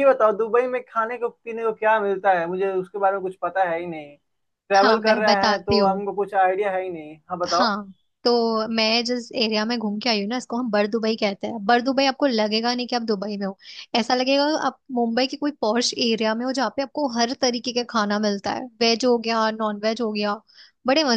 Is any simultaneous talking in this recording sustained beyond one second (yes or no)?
yes